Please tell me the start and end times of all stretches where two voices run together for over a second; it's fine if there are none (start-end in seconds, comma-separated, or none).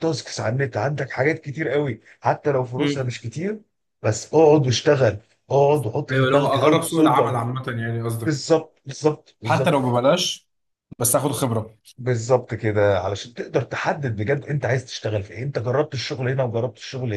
6.1-7.3